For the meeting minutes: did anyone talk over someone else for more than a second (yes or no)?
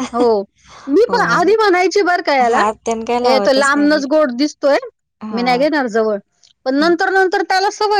yes